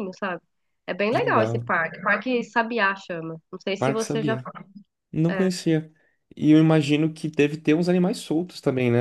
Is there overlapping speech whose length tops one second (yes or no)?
no